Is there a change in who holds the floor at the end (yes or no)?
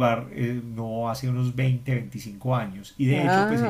no